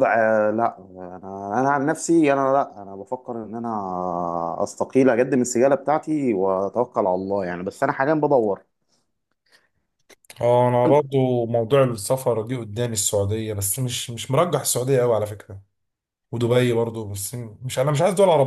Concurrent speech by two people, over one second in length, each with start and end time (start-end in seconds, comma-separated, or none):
none